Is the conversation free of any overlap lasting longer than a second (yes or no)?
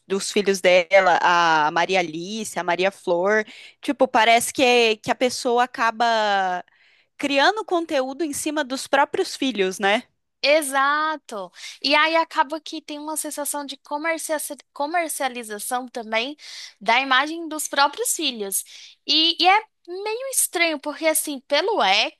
yes